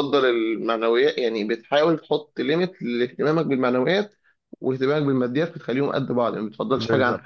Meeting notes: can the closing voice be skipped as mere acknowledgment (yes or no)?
no